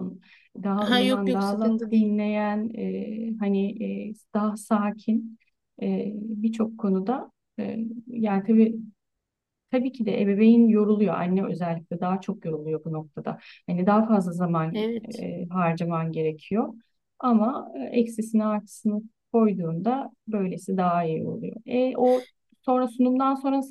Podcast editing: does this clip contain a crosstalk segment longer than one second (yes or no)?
yes